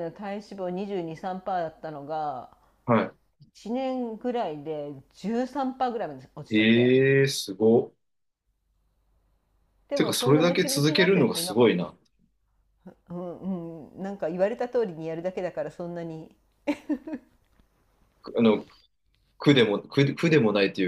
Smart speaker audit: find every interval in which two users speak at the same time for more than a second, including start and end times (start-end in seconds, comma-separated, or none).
9.9-11.9